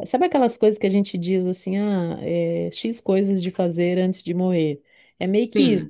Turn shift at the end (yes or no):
no